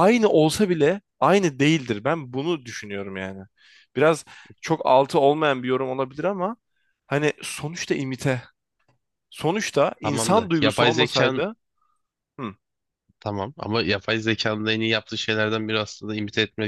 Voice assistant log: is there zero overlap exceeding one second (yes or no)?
no